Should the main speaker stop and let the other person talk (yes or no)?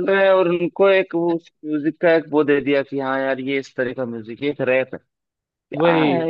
no